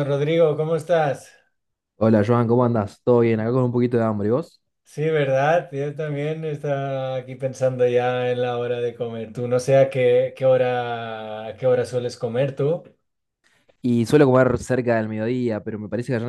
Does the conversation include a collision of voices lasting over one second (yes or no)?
no